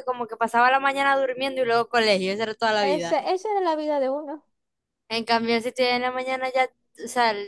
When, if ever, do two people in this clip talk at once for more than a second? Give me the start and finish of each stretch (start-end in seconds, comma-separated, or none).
none